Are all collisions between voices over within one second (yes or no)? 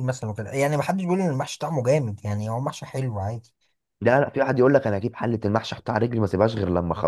yes